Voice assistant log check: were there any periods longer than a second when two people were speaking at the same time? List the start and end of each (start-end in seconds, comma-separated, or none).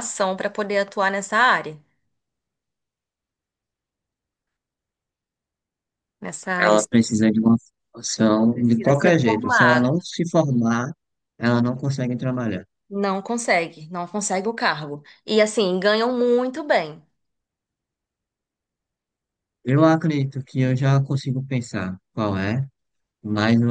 8.5-9.9